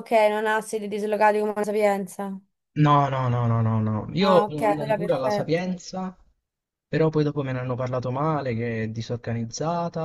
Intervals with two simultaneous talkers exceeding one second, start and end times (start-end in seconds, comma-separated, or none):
4.2-5.8